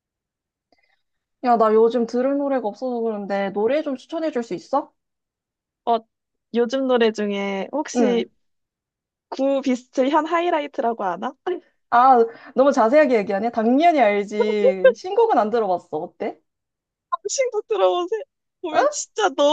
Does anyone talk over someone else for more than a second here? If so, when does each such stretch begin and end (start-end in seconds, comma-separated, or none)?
none